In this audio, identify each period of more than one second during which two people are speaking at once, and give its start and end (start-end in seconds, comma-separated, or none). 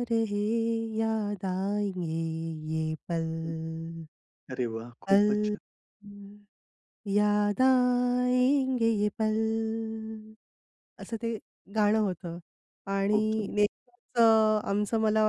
none